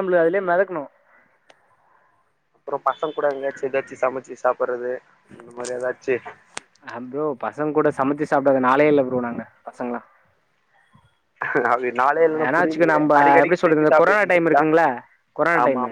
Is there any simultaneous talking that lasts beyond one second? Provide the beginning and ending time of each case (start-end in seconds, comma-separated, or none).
12.4-14.5